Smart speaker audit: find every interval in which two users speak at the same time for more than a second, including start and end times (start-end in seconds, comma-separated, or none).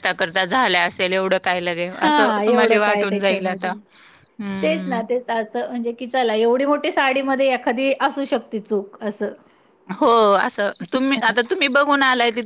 2.0-3.7